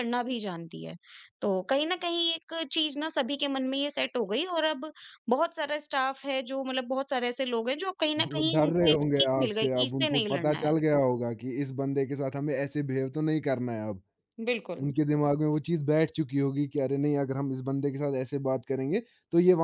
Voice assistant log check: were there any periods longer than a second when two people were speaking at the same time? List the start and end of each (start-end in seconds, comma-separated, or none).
8.2-10.7